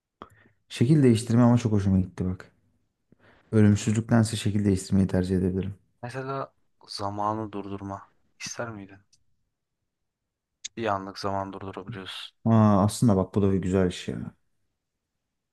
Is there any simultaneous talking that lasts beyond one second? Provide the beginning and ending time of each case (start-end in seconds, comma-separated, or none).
none